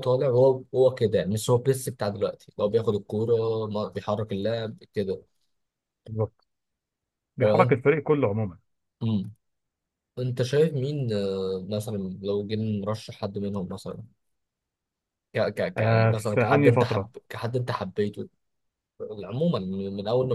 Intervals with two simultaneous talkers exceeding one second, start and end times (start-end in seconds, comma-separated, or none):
15.8-17.1